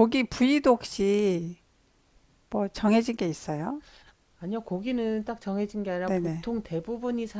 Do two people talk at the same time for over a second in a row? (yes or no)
no